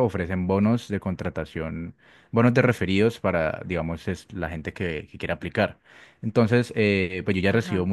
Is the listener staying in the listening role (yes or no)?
yes